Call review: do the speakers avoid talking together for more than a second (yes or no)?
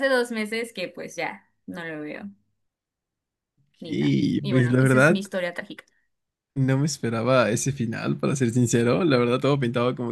no